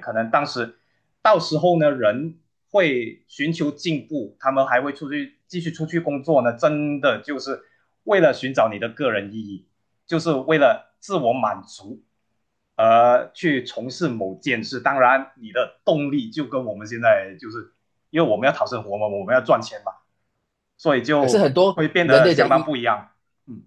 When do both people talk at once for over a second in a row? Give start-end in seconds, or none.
21.2-22.7